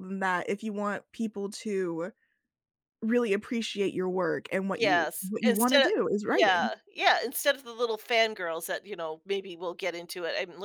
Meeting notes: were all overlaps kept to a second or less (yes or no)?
no